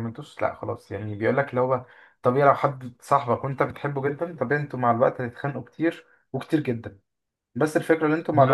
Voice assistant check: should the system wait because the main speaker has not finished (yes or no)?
no